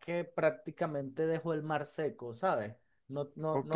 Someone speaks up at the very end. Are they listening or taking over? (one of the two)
taking over